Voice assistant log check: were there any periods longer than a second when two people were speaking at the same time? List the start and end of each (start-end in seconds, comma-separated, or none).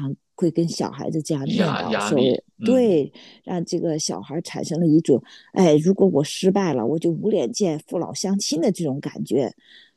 1.4-3.1